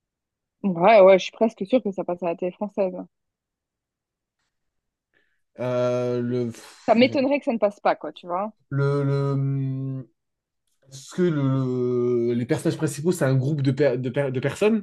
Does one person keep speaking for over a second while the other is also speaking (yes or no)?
no